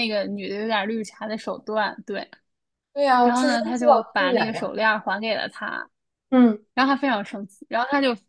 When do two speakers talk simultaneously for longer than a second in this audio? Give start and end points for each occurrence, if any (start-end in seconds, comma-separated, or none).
3.2-4.7